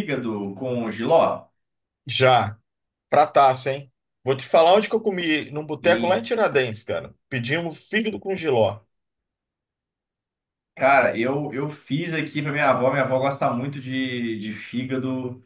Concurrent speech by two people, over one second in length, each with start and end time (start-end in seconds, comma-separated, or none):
none